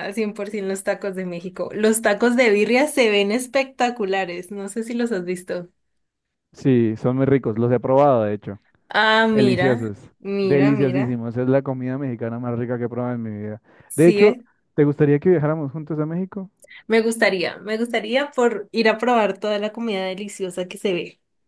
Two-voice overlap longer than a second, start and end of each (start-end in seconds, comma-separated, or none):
9.3-11.2